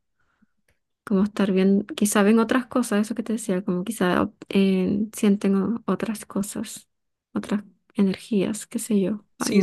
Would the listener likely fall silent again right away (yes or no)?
no